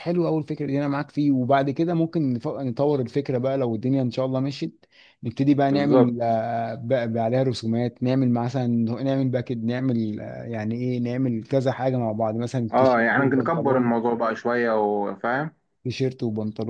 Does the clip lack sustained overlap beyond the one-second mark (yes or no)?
no